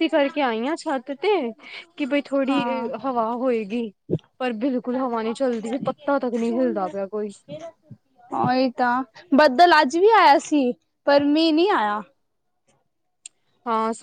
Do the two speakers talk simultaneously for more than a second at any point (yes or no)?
no